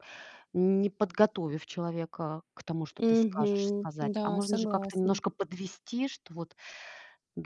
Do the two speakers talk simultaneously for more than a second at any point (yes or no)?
yes